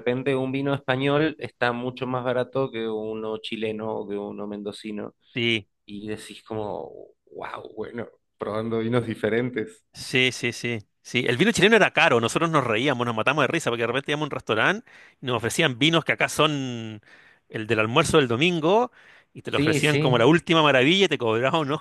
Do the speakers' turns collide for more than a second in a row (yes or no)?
no